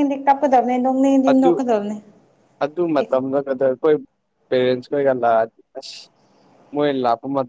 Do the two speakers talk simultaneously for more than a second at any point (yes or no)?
no